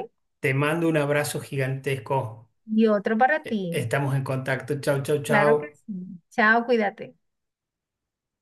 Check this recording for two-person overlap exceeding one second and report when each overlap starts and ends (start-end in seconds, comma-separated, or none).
none